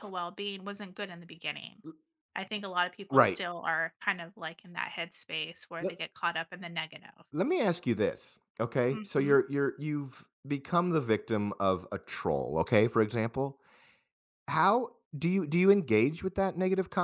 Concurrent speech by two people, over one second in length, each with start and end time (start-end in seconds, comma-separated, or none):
none